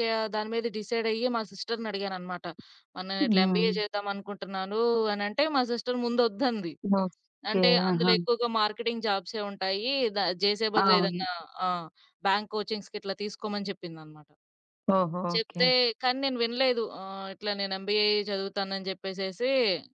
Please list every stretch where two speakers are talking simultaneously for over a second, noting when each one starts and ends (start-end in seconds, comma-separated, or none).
none